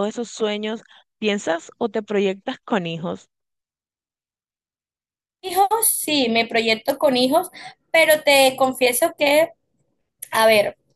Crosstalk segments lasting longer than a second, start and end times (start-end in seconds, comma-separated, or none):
none